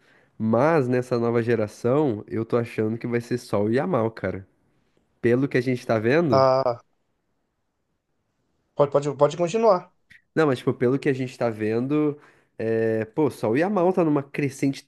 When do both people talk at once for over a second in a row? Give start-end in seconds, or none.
none